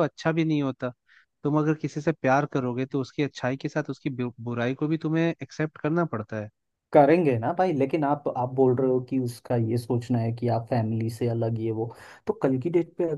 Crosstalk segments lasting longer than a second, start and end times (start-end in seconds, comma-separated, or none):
none